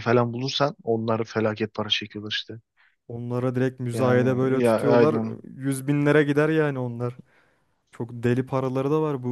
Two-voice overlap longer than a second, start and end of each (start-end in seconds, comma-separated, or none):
3.9-5.4